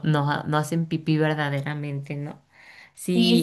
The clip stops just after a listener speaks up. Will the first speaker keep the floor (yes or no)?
no